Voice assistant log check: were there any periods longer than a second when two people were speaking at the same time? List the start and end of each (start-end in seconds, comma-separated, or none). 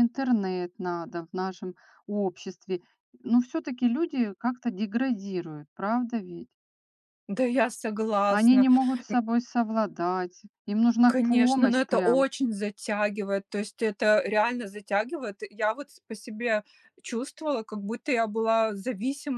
11.0-12.2